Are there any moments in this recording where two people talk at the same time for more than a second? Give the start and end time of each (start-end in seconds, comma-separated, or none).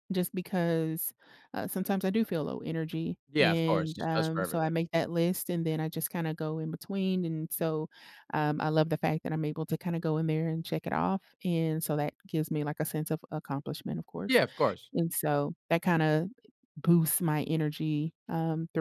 3.3-4.7